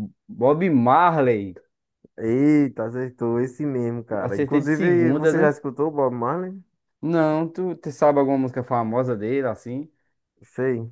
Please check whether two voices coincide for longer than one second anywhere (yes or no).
yes